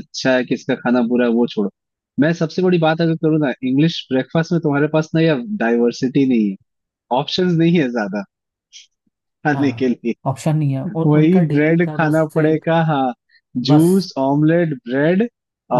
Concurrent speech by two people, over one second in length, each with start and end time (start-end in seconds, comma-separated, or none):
11.0-12.6